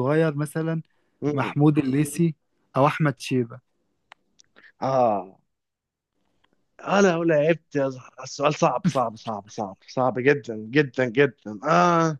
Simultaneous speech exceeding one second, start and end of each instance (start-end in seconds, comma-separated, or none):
none